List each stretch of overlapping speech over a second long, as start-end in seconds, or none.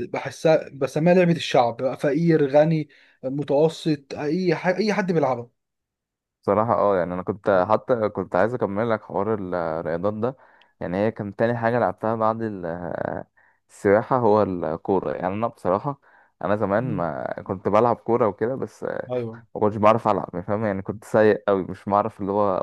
none